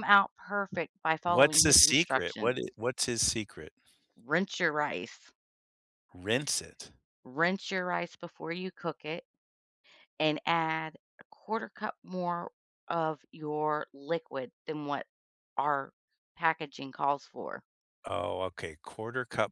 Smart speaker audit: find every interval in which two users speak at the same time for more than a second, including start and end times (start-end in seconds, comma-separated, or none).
1.3-2.6